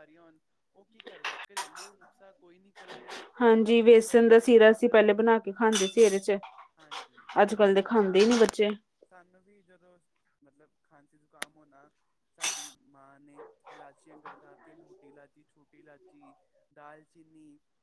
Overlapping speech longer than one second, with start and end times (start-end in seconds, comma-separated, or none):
3.6-4.9